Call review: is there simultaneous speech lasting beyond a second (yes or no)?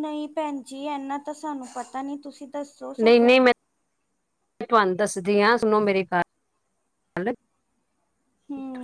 no